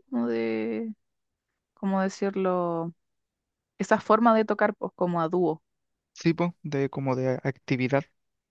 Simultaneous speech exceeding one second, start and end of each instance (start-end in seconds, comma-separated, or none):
none